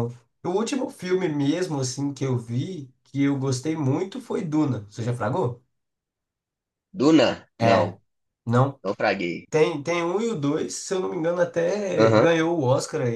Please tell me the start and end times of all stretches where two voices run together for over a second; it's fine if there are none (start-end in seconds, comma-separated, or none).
none